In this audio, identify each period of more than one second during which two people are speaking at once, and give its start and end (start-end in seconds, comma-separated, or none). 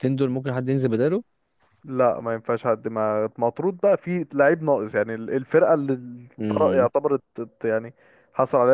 none